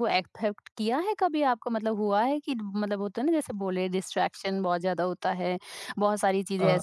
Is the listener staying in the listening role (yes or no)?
yes